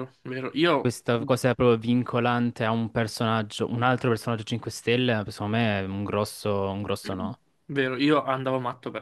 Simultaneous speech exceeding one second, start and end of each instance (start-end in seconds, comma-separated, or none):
none